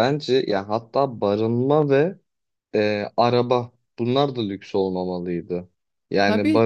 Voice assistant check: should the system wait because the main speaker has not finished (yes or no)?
yes